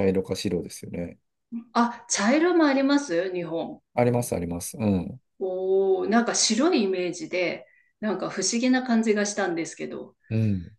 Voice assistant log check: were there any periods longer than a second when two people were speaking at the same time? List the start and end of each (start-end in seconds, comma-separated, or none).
none